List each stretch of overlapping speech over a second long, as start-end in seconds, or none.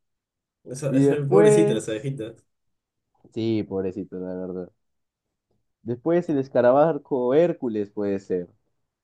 0.9-2.1